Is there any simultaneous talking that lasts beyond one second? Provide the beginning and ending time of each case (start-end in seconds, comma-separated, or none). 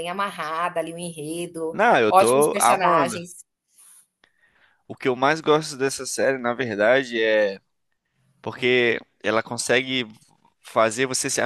1.7-3.2